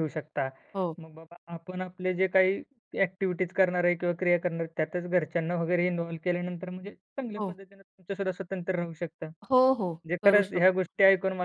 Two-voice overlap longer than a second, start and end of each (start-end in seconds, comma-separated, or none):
9.5-10.9